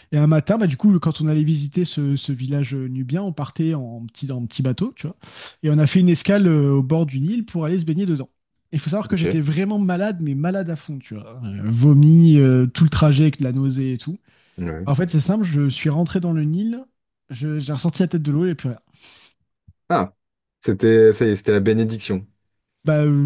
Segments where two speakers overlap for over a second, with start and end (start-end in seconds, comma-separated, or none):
none